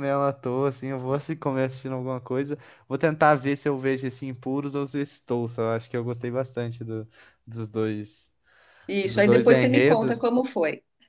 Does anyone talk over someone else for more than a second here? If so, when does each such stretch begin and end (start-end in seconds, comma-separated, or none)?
9.0-10.3